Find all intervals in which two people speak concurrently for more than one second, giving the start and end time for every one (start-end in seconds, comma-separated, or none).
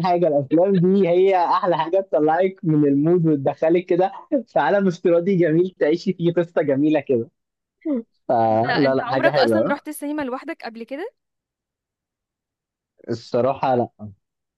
8.5-9.8